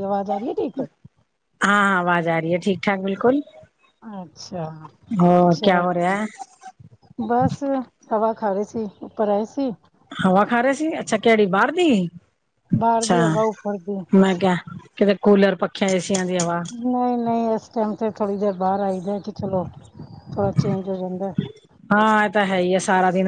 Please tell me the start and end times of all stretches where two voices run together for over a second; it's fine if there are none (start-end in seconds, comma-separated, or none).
none